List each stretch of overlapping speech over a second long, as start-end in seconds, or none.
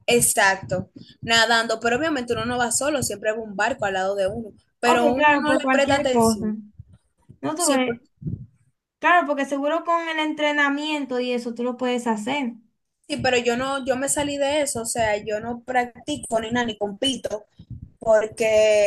4.8-6.5